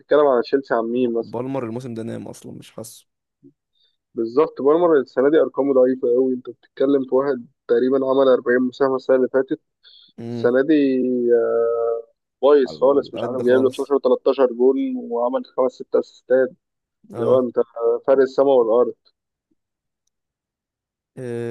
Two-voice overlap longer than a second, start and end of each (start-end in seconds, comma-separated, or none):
12.7-13.9